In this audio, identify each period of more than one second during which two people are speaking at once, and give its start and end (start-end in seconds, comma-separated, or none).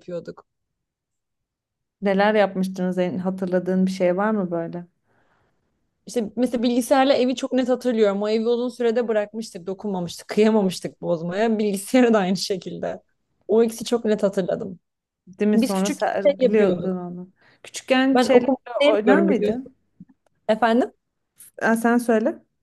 15.5-17.0, 18.1-19.7